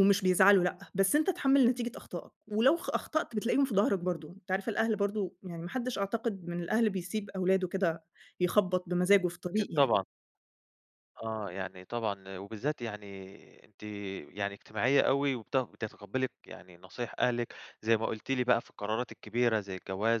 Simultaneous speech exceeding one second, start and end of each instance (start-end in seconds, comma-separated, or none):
none